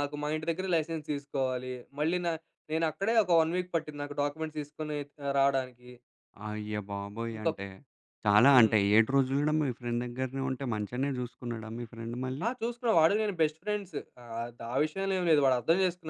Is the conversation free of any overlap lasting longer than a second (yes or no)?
yes